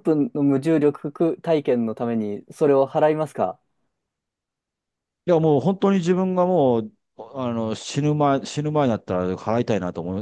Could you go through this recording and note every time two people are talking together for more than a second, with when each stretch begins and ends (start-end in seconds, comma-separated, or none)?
none